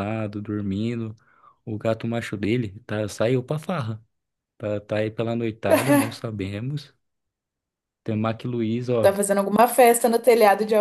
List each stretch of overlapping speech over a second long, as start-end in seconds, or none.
none